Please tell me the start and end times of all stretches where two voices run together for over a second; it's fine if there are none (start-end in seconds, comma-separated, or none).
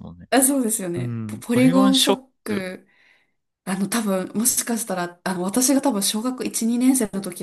0.9-2.6